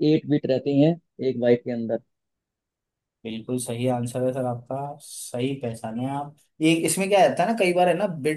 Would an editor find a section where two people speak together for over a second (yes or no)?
no